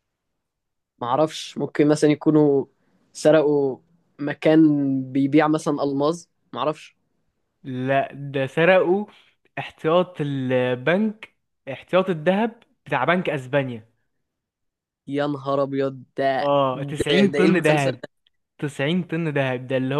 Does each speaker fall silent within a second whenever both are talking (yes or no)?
no